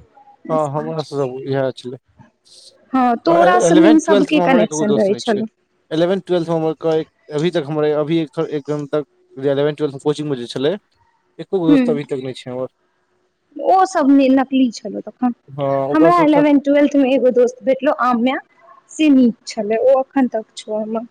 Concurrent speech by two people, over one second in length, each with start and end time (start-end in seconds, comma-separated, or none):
3.7-5.4